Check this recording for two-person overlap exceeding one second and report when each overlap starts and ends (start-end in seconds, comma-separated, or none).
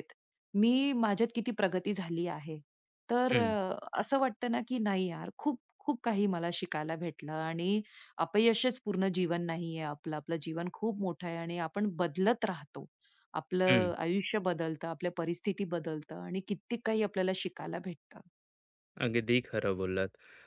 none